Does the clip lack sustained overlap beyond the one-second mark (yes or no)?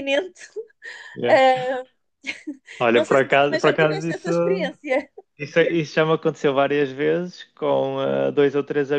no